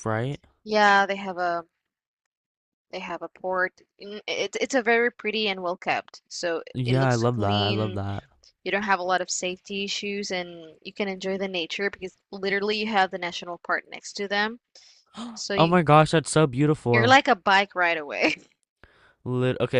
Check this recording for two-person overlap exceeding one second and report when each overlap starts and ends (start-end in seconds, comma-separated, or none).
6.8-8.0